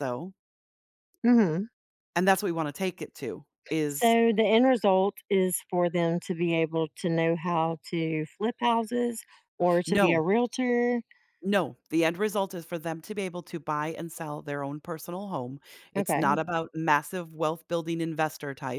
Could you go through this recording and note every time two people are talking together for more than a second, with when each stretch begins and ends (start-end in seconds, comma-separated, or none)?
none